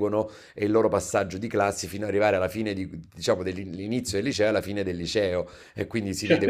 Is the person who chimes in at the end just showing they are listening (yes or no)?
no